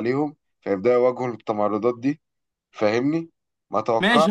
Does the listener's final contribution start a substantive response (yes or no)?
yes